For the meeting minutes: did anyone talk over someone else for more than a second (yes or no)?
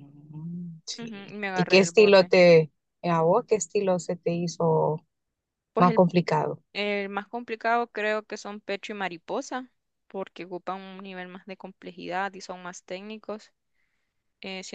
yes